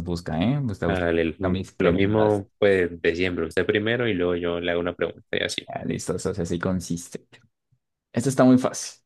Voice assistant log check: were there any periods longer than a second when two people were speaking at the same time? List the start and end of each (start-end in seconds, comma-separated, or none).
0.9-2.4